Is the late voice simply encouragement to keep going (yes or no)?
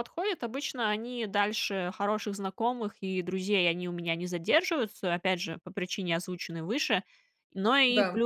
yes